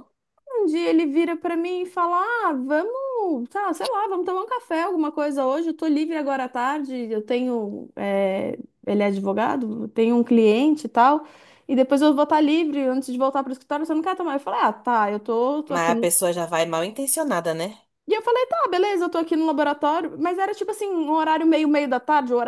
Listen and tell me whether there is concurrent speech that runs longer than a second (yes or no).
no